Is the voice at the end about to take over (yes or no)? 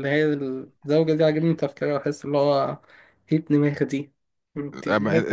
yes